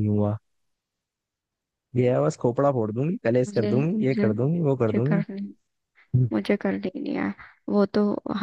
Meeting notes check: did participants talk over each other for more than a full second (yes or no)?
yes